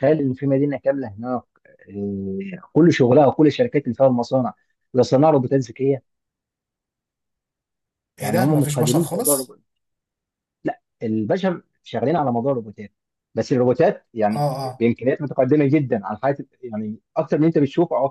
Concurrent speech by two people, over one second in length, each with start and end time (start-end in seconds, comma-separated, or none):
8.2-9.5